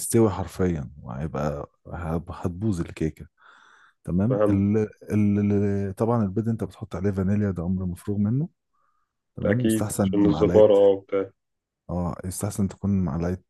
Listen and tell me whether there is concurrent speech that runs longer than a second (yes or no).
yes